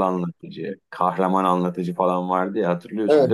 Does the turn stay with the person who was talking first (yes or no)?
no